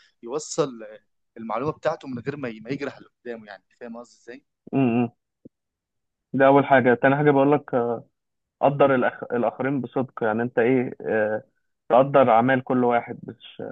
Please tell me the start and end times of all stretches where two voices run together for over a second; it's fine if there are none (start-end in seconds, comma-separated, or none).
none